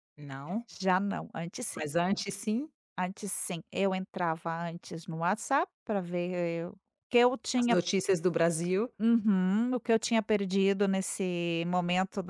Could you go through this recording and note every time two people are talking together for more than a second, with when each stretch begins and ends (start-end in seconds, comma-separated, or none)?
none